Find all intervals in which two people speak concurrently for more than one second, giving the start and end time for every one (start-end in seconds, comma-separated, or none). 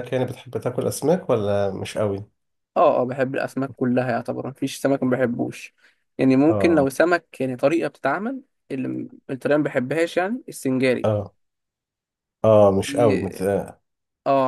none